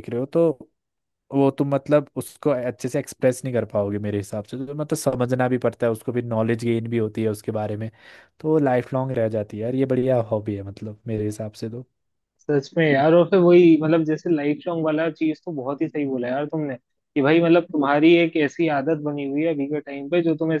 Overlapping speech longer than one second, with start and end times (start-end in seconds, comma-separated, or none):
none